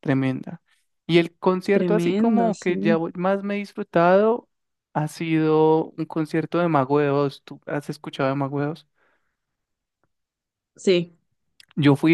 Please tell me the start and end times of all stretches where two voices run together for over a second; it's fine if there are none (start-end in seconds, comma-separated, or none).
1.7-3.0